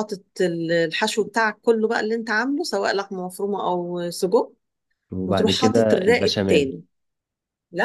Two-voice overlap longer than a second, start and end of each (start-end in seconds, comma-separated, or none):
5.3-6.8